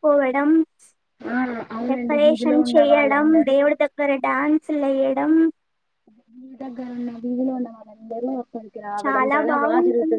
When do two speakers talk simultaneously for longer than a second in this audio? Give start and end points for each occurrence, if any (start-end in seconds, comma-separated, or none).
1.9-3.6